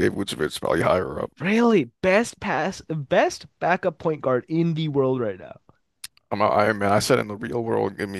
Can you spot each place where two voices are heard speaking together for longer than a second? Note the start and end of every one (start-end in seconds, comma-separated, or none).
none